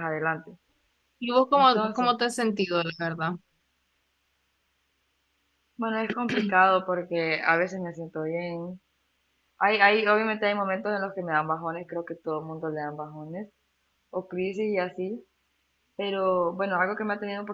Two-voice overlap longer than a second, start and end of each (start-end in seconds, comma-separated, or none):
none